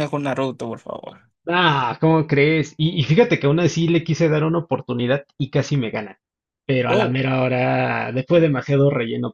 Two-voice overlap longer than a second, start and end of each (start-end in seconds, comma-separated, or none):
none